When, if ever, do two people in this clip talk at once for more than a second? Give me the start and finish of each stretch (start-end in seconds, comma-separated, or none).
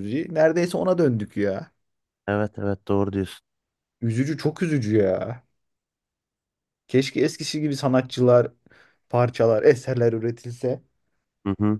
none